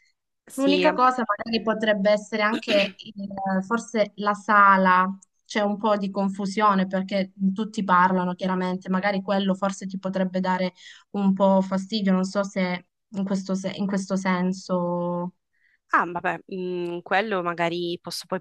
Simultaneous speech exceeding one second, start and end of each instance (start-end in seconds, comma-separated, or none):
none